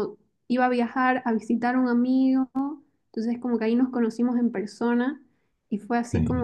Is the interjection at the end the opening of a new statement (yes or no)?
no